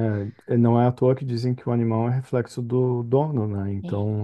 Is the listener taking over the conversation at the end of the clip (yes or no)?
no